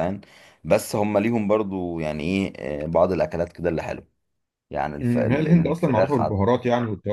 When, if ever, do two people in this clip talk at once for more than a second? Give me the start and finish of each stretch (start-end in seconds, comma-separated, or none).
5.0-6.4